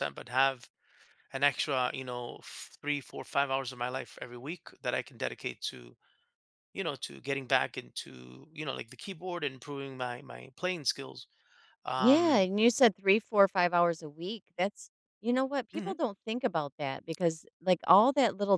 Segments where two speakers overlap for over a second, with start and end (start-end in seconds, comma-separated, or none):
none